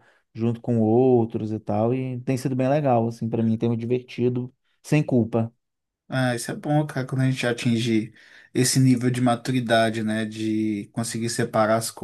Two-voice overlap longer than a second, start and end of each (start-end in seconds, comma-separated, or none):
none